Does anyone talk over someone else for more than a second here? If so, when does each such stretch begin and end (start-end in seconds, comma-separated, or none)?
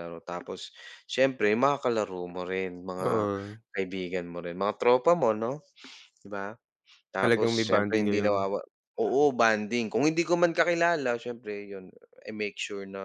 7.2-8.4